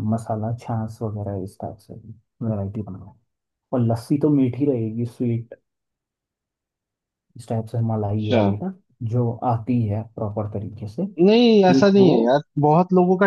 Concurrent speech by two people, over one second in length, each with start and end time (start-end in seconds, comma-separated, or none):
none